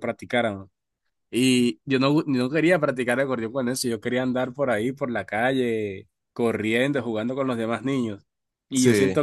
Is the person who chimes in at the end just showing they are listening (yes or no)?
yes